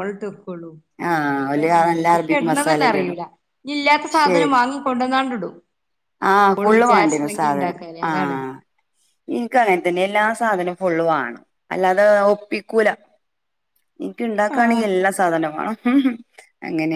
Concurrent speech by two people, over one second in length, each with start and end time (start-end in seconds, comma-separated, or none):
1.4-3.2, 6.6-8.4